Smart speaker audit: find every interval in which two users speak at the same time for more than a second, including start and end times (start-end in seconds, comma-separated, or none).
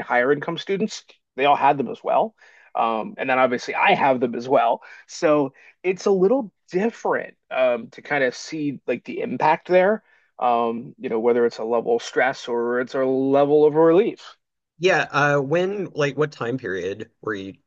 none